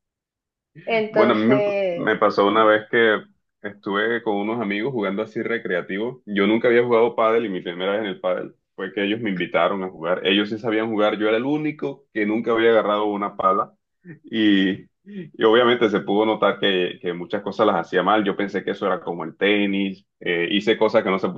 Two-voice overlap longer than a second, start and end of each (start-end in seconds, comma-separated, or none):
1.1-2.7